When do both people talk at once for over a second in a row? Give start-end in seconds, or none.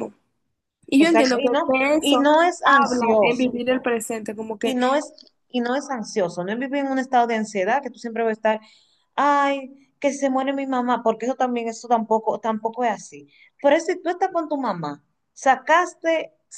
1.0-3.6